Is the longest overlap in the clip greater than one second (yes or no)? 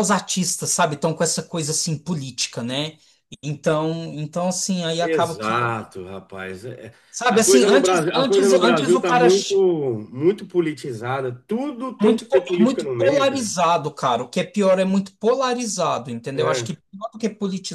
yes